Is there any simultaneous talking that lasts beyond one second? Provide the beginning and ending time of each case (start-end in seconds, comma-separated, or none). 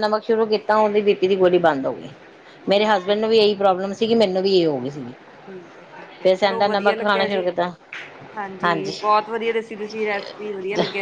6.2-7.4